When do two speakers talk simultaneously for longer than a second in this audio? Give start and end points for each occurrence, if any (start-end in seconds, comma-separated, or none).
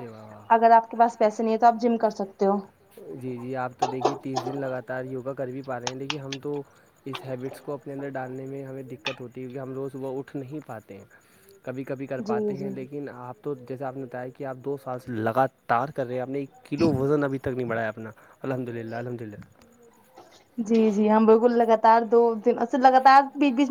none